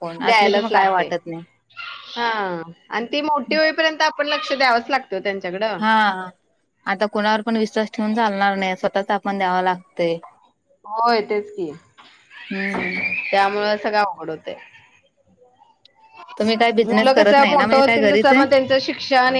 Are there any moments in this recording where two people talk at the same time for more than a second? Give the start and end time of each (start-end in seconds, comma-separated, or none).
16.8-18.4